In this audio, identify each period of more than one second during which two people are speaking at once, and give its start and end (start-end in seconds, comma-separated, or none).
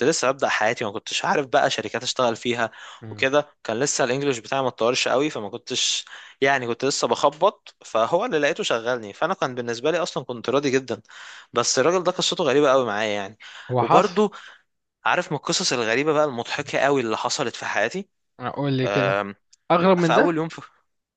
none